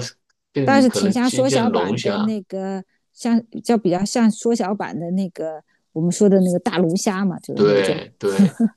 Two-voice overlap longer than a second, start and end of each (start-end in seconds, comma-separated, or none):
0.6-2.3